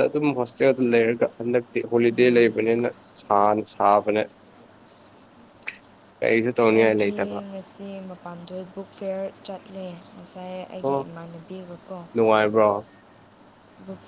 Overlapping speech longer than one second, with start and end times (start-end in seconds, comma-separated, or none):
none